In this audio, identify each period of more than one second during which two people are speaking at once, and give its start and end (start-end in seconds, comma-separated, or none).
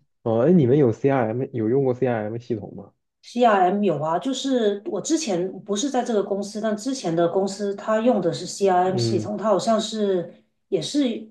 none